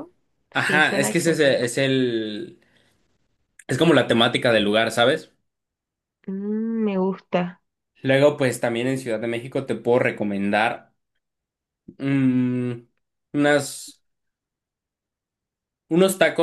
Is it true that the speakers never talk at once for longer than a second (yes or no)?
no